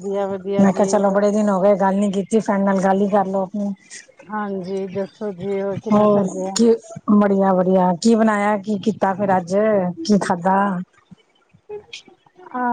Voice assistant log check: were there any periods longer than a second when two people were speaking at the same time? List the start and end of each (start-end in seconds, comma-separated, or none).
none